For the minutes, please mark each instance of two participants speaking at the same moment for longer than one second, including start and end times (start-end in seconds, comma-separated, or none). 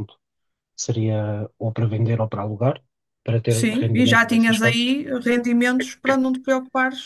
3.5-4.8